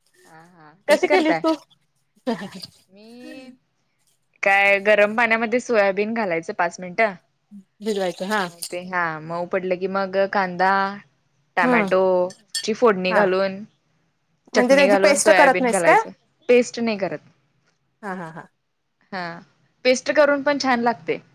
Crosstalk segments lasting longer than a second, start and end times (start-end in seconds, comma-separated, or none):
14.6-16.0